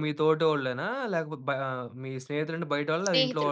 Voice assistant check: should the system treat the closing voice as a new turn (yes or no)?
yes